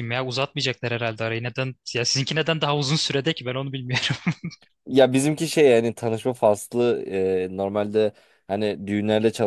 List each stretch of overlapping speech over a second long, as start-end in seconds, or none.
none